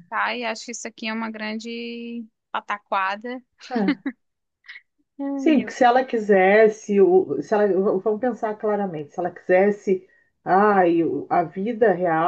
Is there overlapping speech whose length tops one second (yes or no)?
no